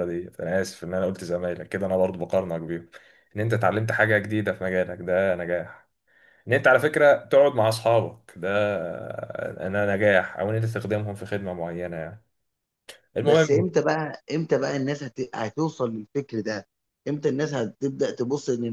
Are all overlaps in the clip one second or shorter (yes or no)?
yes